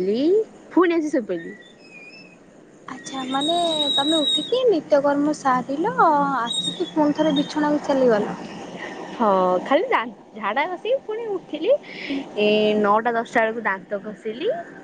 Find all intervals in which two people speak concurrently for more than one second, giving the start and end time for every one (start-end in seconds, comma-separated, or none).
none